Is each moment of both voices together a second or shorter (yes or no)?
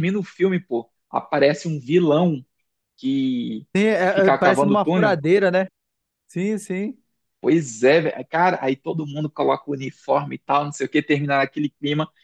no